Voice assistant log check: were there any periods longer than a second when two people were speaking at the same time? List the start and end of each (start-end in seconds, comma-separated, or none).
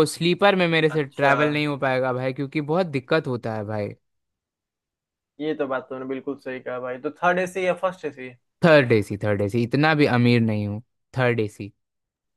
none